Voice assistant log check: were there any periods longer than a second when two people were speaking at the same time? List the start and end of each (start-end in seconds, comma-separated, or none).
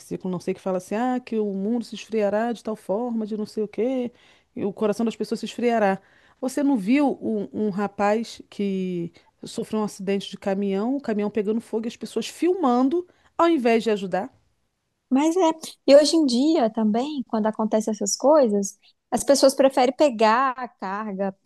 none